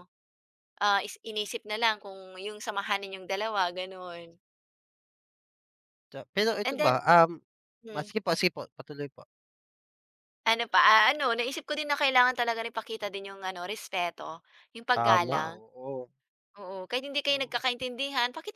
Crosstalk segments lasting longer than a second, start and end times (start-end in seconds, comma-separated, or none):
none